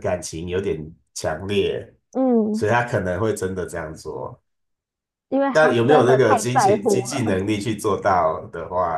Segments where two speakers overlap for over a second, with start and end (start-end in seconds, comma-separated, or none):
5.5-7.2